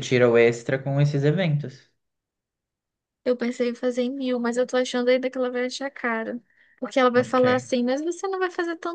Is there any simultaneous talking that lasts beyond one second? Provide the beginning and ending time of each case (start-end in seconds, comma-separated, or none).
none